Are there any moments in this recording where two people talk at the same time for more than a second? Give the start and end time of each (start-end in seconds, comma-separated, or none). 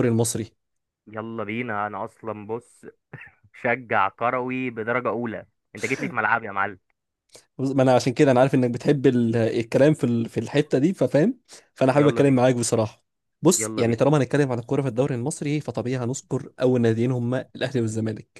none